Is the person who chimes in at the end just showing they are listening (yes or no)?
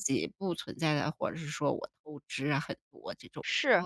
no